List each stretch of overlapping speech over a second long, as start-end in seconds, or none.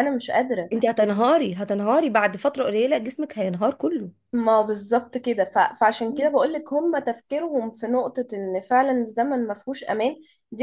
none